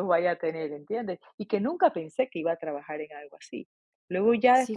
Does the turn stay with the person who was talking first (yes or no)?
yes